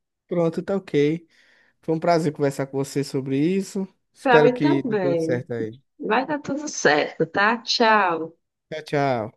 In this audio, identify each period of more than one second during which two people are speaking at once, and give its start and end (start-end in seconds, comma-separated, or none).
4.2-5.5